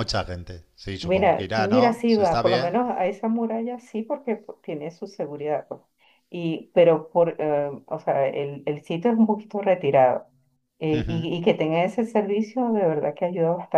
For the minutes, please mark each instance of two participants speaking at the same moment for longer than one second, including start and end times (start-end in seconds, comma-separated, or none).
1.0-2.8